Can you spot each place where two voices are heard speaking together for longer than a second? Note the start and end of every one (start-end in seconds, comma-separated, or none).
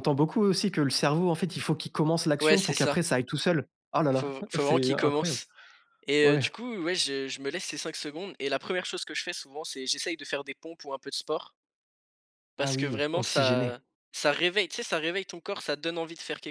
4.1-5.4, 12.6-13.8